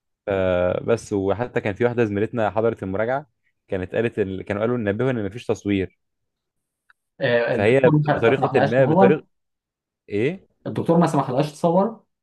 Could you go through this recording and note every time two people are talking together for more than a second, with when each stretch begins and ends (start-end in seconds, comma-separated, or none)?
7.5-9.2